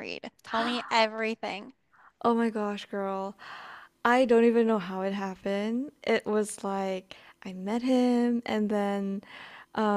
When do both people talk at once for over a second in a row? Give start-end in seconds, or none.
none